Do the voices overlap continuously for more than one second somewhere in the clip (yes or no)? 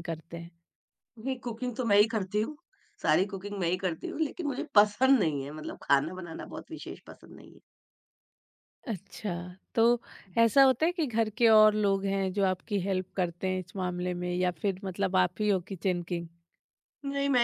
no